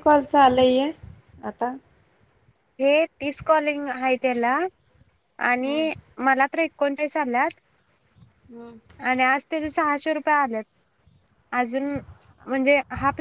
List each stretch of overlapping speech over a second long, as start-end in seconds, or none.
none